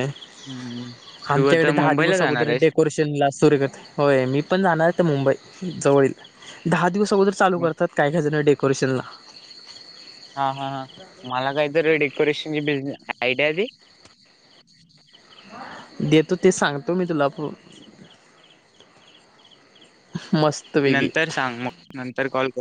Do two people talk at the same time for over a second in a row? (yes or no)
yes